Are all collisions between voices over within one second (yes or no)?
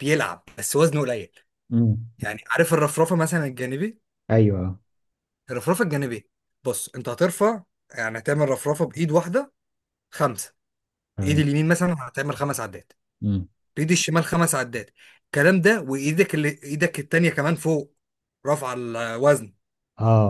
yes